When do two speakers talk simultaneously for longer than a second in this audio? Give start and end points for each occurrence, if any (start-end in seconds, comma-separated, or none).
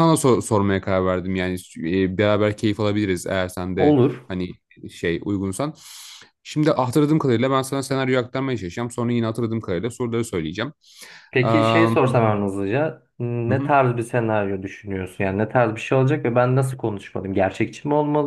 none